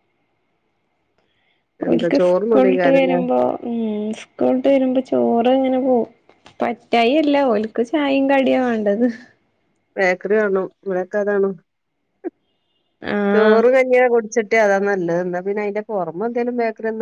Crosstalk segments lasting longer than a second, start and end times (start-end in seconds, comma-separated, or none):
1.9-3.2